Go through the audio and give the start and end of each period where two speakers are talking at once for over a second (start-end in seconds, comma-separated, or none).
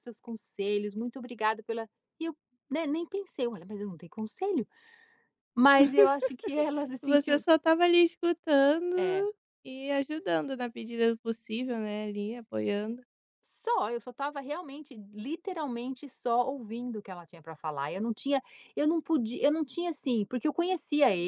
none